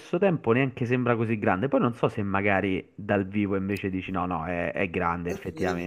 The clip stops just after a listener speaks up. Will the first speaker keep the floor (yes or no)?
no